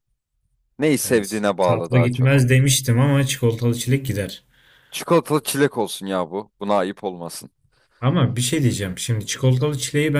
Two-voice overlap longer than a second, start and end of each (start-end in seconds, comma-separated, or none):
1.0-2.3